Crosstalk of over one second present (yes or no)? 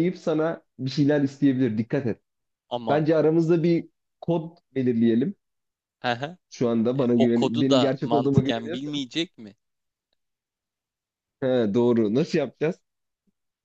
yes